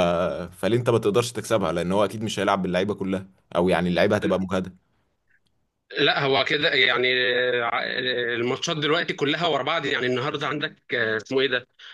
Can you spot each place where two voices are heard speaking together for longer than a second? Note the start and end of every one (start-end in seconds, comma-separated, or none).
none